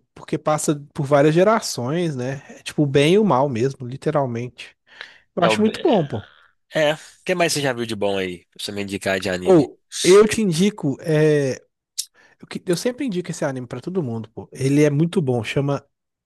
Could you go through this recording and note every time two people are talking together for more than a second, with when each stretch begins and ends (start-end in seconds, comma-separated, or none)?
none